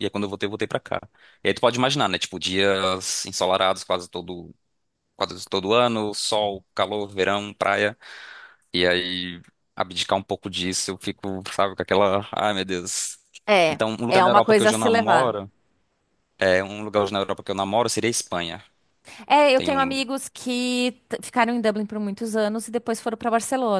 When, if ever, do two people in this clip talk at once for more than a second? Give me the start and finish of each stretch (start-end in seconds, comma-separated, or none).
13.7-15.3